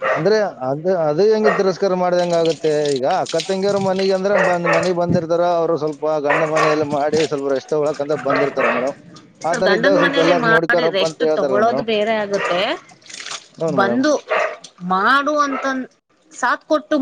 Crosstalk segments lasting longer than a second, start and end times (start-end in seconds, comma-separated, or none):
9.5-11.8